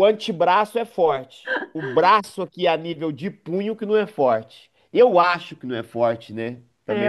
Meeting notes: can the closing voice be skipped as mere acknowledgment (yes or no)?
no